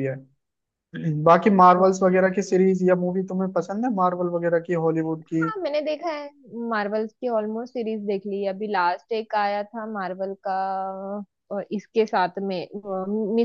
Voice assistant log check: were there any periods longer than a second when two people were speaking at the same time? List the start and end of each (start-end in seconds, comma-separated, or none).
none